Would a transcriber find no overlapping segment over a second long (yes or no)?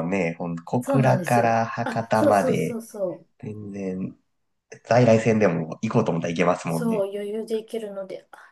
no